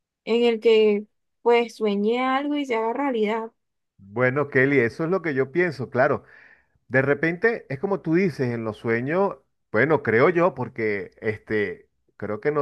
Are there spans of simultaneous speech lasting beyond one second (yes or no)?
no